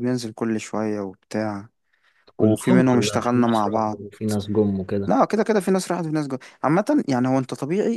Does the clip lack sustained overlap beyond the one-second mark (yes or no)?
no